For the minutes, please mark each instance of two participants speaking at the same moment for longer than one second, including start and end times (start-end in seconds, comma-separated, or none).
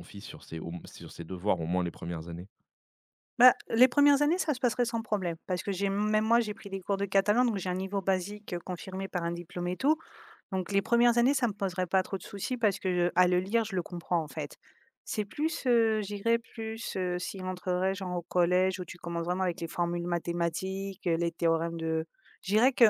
none